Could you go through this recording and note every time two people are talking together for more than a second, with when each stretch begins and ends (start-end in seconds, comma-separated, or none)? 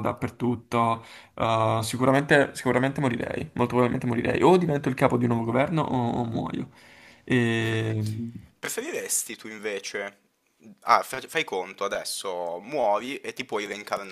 none